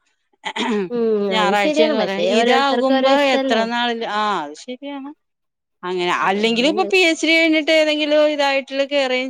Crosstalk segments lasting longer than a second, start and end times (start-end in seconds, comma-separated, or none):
1.4-3.6